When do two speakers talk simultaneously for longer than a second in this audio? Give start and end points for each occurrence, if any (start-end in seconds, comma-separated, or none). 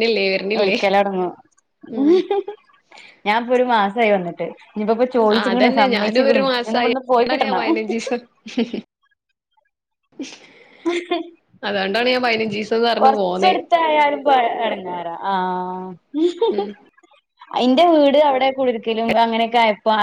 none